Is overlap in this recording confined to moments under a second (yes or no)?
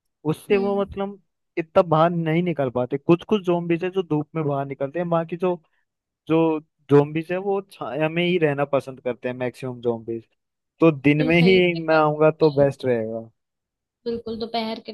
no